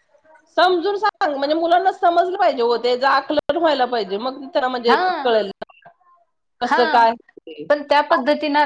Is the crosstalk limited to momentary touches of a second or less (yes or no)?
yes